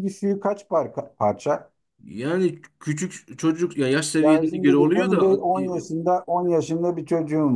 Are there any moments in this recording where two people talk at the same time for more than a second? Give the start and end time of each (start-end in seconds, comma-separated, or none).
4.2-5.6